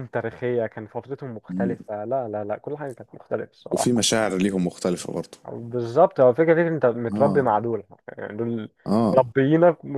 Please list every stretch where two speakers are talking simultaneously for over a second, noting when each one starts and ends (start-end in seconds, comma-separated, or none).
none